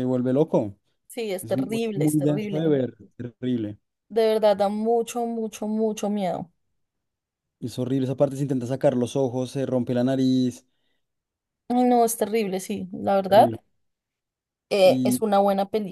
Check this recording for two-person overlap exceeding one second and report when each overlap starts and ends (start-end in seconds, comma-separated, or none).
1.4-2.7